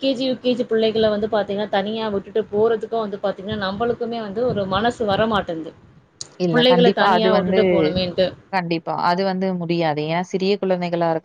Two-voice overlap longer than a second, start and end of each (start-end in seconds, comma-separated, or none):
none